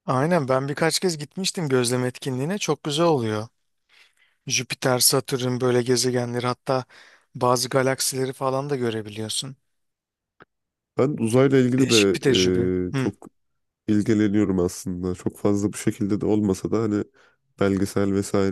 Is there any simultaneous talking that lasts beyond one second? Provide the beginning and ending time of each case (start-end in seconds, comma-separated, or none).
none